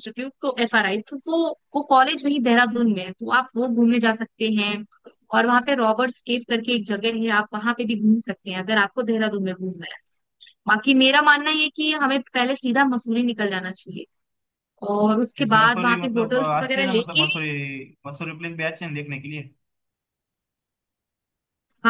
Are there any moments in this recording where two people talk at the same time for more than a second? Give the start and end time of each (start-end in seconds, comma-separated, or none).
15.4-17.2